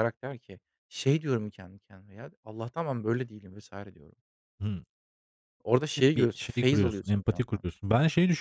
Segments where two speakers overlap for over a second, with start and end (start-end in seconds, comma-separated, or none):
6.0-7.6